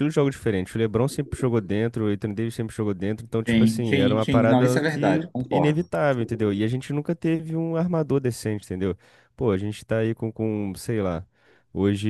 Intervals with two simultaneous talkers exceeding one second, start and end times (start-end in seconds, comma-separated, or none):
3.5-5.9